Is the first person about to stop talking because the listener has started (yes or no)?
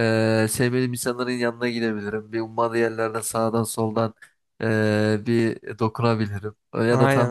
no